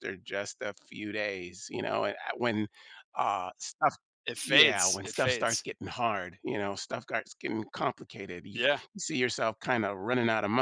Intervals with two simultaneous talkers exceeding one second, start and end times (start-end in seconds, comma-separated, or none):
4.4-5.6